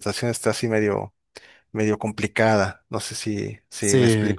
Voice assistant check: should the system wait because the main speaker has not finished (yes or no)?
no